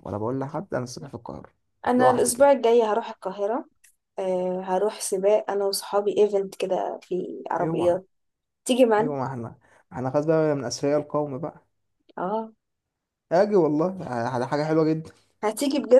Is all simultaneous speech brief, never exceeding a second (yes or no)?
yes